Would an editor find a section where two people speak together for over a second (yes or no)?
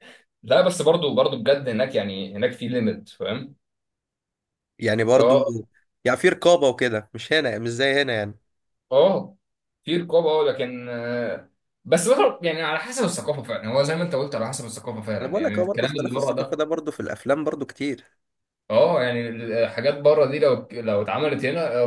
yes